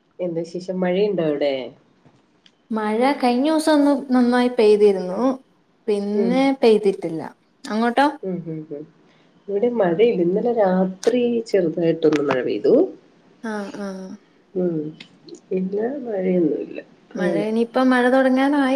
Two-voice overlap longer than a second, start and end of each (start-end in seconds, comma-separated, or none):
none